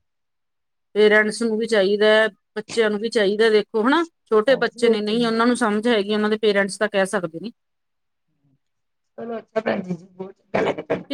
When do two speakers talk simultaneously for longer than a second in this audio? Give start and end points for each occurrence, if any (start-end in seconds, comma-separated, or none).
none